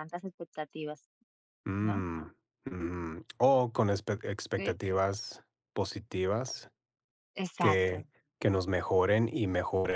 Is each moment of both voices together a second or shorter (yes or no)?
yes